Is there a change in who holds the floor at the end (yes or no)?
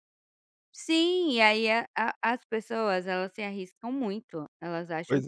no